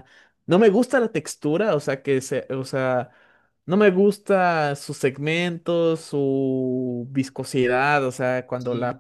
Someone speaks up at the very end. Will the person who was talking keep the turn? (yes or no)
yes